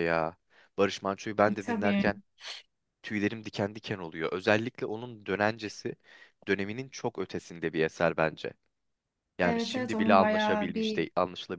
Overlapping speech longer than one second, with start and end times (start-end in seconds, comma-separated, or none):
9.4-11.1